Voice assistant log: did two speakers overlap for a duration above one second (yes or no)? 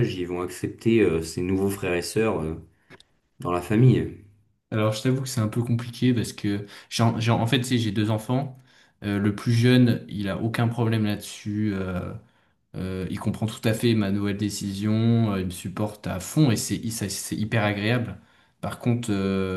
no